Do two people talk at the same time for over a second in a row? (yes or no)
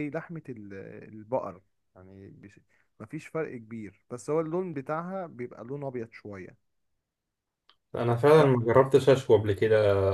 no